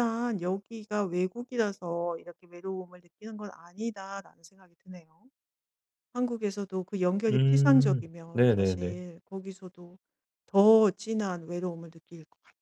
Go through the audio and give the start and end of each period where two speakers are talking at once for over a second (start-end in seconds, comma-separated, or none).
7.3-9.0